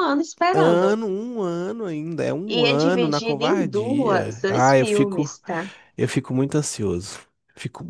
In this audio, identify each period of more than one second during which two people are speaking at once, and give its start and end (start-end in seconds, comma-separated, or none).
2.5-5.3